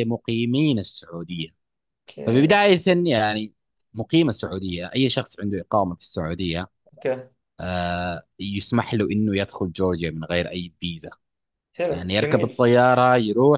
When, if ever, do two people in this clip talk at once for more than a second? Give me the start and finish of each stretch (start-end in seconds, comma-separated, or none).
none